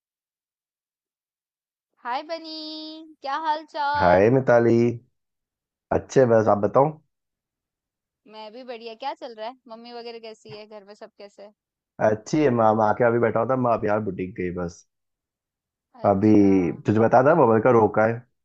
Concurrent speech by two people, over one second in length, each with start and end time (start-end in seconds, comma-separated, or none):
none